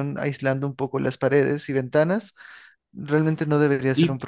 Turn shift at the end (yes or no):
yes